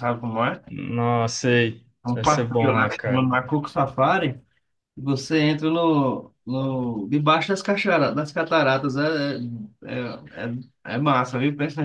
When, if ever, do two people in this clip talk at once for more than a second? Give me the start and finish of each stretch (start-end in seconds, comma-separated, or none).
2.0-3.3